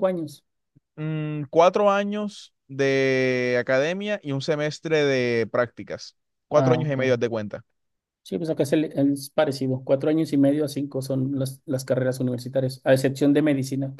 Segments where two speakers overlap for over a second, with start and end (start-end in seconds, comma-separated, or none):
none